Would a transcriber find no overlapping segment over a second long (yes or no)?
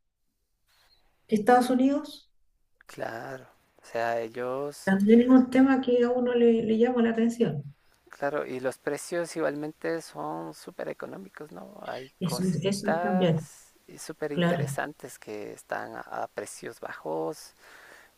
no